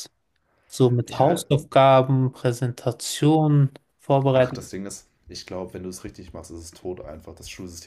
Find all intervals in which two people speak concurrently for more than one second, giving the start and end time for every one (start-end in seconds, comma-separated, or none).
none